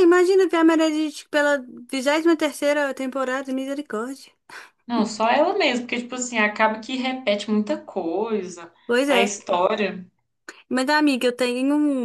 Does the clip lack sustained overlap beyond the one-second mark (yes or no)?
yes